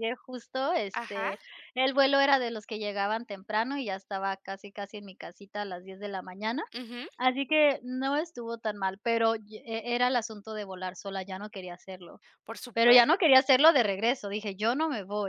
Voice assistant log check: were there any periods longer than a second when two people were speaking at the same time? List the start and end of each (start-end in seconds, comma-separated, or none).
none